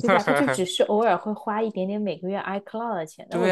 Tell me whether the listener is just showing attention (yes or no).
no